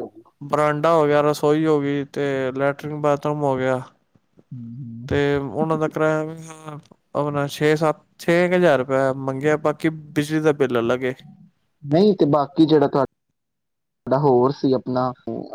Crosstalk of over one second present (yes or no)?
no